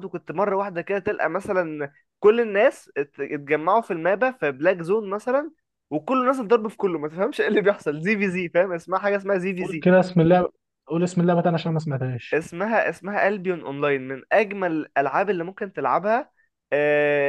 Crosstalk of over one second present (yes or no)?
no